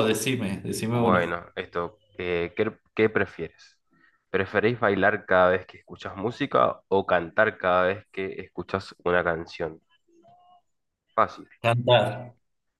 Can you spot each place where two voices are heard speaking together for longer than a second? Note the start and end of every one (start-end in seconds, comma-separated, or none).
none